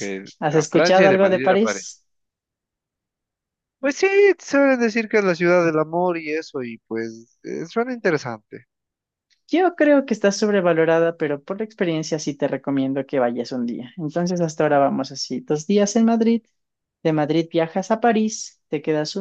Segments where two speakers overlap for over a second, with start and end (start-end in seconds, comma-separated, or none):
0.5-2.0